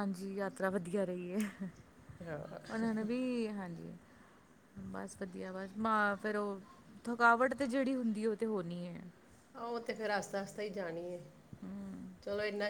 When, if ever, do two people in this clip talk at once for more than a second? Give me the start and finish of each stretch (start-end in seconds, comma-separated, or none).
none